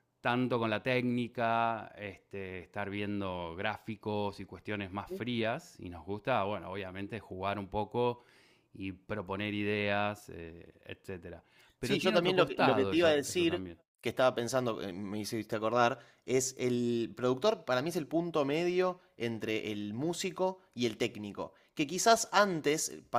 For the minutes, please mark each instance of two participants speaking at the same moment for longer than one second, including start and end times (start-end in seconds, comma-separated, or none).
11.8-13.6